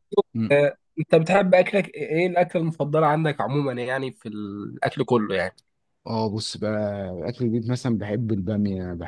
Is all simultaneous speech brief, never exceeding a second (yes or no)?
yes